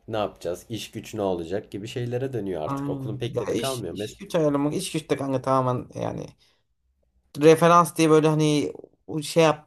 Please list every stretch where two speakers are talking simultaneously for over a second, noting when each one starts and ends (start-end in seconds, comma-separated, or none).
2.6-4.1